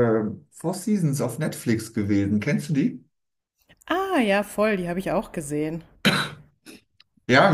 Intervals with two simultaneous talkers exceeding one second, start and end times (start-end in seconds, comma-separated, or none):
none